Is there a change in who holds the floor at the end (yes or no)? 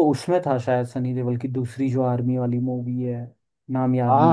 yes